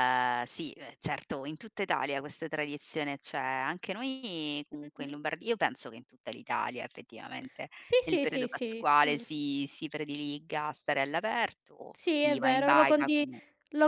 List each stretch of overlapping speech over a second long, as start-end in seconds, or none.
7.8-9.2, 11.9-13.3